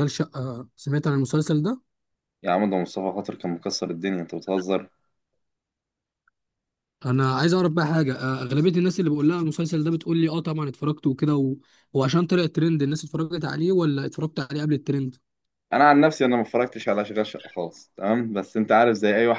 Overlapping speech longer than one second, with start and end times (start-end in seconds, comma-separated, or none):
none